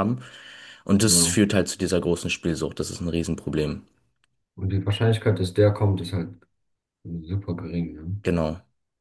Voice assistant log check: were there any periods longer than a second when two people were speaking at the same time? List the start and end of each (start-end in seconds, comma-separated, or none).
none